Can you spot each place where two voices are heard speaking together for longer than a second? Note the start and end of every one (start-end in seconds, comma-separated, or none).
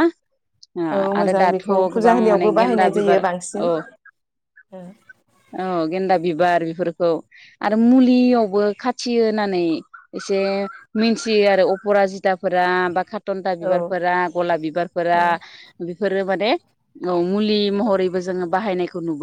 1.2-3.6